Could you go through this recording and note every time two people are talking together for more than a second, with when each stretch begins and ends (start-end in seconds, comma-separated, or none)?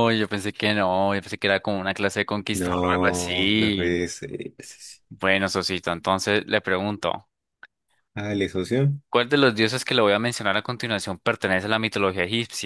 2.5-4.0